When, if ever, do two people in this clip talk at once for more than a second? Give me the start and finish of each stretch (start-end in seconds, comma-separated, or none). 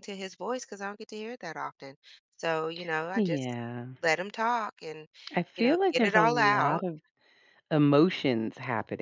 5.6-6.8